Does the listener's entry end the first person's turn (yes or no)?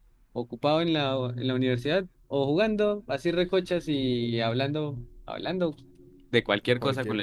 yes